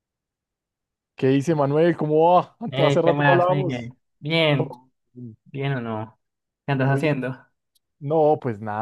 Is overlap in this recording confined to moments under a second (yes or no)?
no